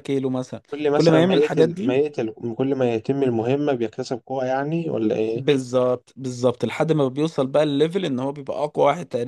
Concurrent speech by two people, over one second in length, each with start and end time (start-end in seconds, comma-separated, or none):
0.7-2.0